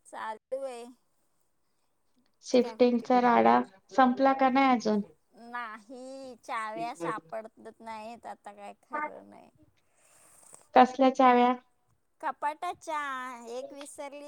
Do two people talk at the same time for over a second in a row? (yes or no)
no